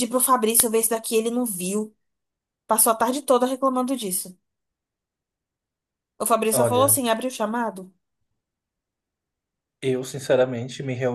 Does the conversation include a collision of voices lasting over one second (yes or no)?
no